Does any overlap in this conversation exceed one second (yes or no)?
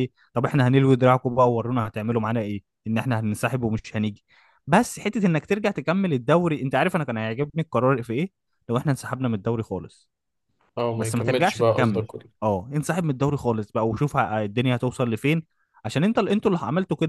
yes